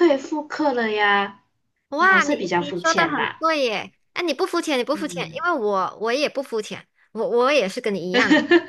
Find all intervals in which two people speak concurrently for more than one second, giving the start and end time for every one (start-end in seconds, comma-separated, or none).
2.0-3.5